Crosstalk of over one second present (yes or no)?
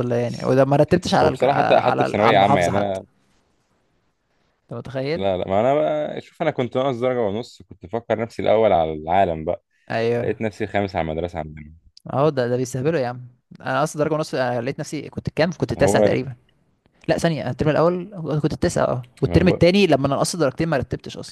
yes